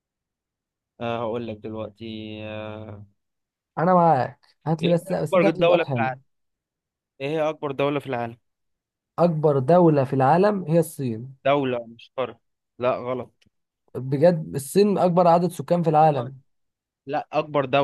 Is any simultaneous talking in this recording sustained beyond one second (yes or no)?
yes